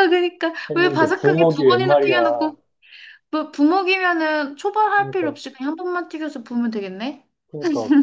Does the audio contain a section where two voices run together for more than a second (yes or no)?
yes